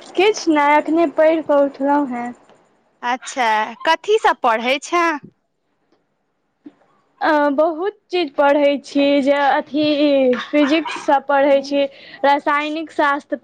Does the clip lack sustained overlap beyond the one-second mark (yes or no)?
yes